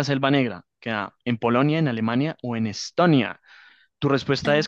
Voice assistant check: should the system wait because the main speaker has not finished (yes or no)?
no